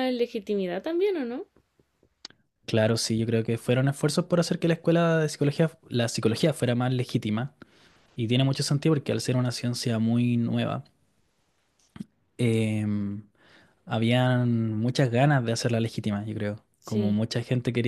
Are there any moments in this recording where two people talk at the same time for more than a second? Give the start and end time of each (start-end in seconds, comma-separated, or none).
none